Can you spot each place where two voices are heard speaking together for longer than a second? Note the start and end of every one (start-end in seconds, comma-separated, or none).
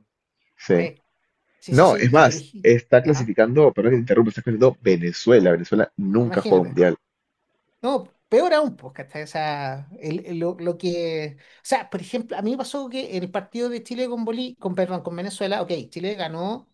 1.7-3.3